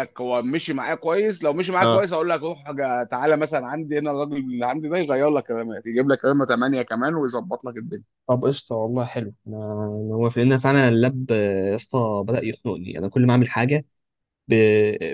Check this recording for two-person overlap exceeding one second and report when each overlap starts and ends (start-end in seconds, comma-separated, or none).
none